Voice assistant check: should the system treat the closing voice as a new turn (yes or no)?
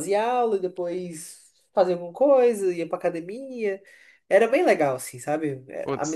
yes